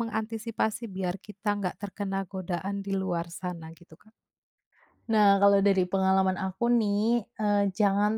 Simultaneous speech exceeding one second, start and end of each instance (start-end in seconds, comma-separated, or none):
none